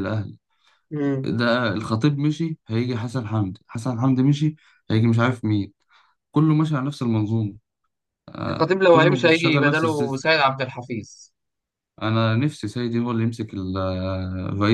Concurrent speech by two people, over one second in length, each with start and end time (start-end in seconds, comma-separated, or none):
8.5-10.3